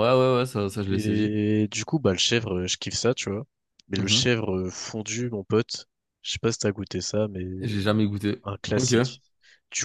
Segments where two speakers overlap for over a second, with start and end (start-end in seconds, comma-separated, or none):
none